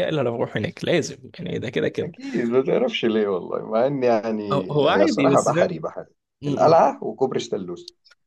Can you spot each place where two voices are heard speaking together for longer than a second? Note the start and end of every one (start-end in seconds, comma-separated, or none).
4.5-5.8